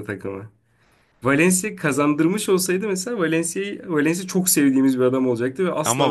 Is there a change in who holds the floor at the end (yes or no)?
yes